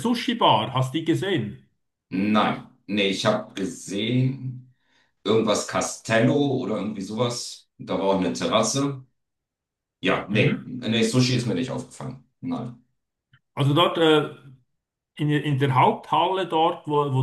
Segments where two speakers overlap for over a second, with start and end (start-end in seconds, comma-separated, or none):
none